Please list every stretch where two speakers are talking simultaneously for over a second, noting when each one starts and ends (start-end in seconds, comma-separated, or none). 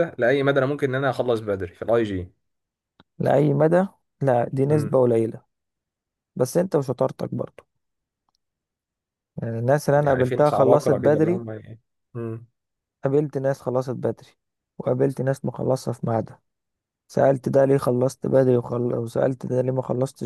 9.9-11.4